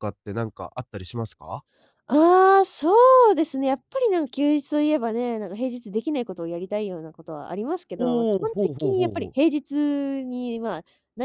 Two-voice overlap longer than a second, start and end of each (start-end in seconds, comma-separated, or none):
8.0-9.4